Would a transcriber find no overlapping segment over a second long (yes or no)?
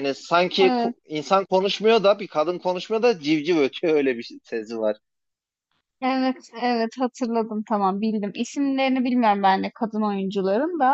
yes